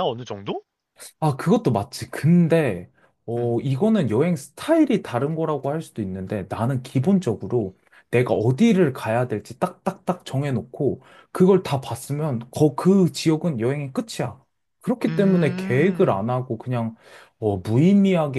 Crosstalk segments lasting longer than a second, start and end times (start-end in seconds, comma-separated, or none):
15.1-16.3